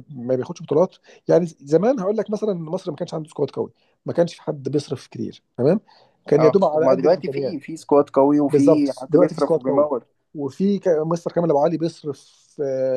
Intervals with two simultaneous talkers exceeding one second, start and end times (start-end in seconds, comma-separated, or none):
6.4-7.6, 8.5-9.9